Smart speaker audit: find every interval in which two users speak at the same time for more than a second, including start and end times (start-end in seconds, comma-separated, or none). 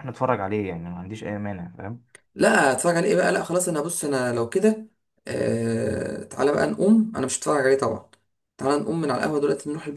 none